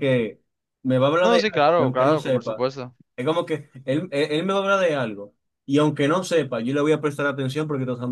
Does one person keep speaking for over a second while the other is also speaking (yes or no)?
yes